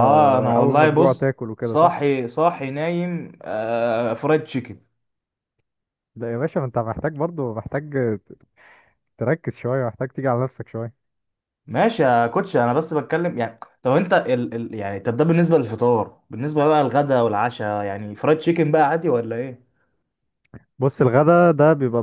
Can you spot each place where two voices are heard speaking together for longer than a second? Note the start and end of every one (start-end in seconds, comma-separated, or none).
0.6-2.0